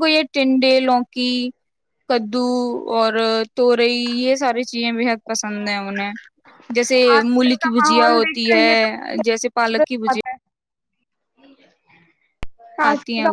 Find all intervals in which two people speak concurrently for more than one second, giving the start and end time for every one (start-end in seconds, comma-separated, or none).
7.2-10.2